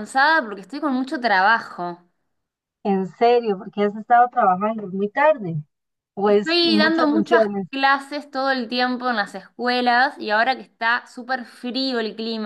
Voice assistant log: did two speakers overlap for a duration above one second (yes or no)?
yes